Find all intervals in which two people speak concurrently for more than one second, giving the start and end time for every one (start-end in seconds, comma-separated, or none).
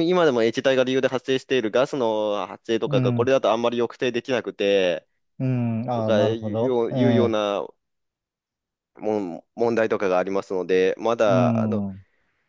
5.9-7.3